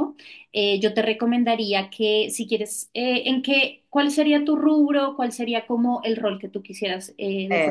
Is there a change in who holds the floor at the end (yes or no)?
yes